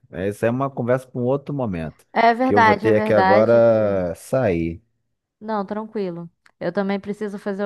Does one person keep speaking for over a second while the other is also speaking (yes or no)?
yes